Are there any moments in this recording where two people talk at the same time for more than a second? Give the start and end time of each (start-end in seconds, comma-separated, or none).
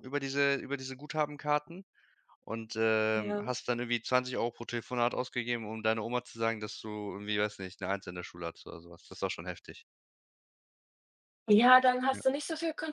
none